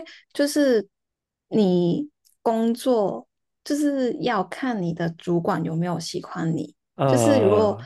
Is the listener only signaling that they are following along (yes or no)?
yes